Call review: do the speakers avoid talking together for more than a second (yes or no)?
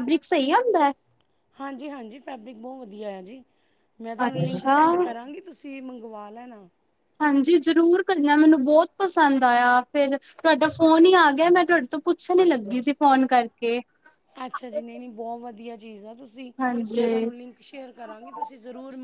yes